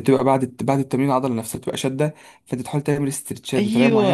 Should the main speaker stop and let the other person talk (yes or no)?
yes